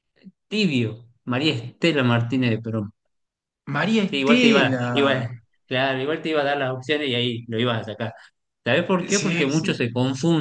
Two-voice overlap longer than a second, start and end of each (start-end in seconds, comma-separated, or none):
3.9-5.3